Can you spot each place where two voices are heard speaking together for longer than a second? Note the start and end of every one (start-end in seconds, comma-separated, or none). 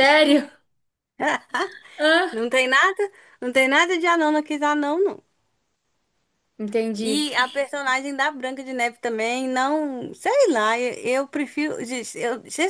none